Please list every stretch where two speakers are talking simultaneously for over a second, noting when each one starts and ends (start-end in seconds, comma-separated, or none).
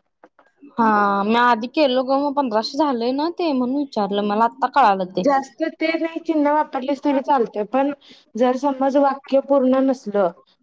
none